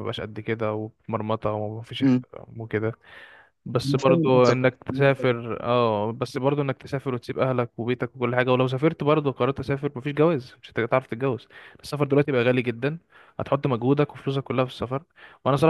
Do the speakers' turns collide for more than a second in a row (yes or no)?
yes